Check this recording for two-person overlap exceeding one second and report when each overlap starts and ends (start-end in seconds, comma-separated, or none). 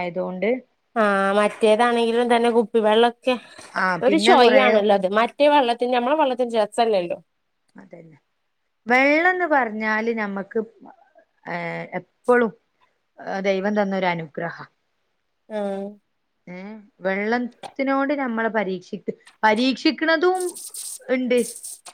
none